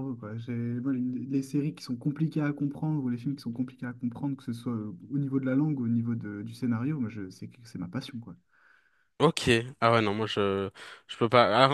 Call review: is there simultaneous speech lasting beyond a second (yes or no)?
no